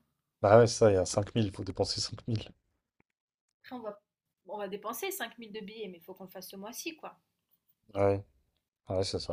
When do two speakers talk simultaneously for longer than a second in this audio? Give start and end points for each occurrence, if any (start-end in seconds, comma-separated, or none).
none